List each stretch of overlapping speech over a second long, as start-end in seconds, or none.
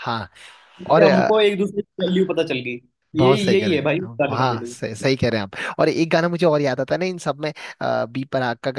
3.2-4.8